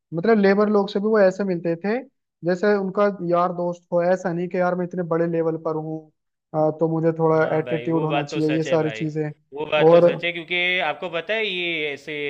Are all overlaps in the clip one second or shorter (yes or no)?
no